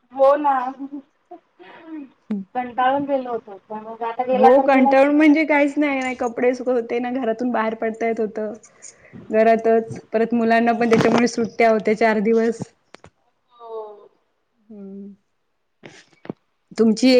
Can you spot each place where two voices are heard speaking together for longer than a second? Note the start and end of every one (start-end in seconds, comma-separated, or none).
none